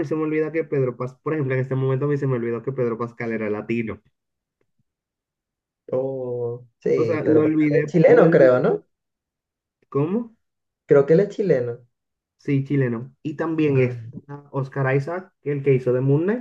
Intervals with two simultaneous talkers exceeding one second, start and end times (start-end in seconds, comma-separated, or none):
7.0-8.6